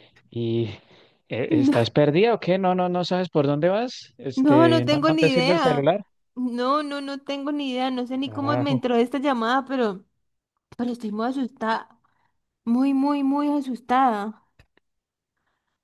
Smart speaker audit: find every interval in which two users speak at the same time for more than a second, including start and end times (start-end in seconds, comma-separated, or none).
4.3-5.9